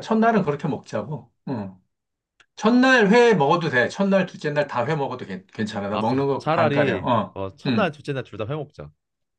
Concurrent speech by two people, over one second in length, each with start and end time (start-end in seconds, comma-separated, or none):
5.9-7.9